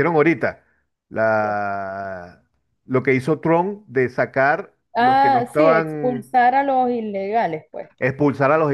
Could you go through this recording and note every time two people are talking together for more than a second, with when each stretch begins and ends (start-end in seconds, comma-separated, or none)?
5.0-6.4